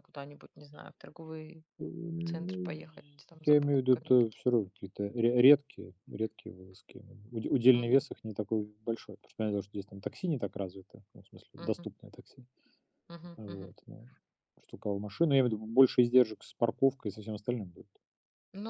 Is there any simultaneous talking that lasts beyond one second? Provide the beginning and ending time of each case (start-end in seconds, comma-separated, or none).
3.4-4.8